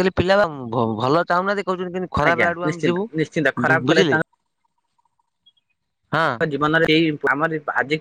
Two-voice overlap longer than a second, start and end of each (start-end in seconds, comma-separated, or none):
2.3-4.2